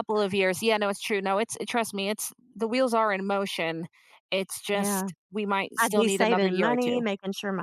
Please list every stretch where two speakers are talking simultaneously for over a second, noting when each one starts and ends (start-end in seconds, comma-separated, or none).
5.8-7.0